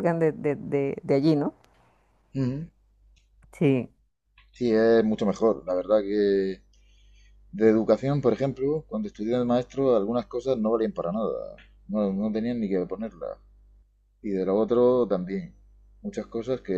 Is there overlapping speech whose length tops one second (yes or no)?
no